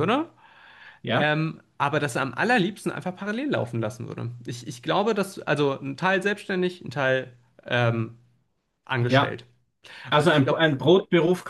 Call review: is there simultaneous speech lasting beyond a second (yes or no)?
no